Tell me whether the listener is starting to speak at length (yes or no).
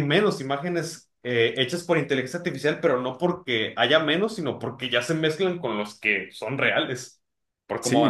yes